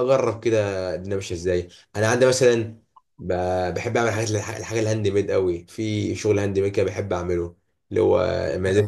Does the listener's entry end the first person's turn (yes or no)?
no